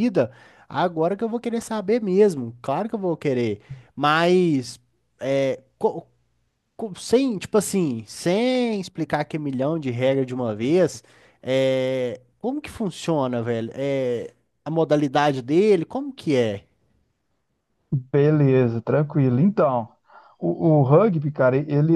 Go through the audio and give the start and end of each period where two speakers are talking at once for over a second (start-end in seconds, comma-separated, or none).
none